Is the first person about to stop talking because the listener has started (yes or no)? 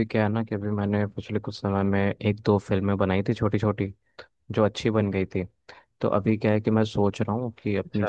no